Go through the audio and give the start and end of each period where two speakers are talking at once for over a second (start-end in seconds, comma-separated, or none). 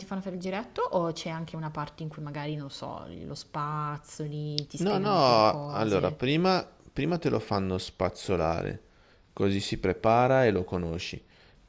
4.8-6.2